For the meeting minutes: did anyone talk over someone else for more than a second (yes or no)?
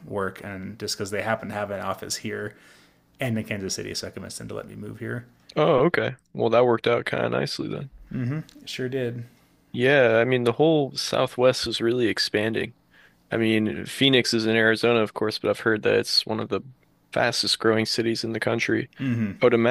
no